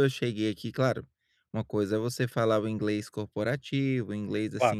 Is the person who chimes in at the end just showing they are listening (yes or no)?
yes